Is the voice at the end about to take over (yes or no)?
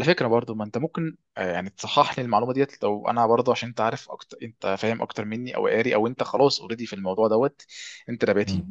no